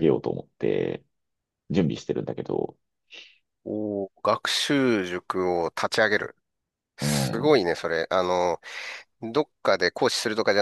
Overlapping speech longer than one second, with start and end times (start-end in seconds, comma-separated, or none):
none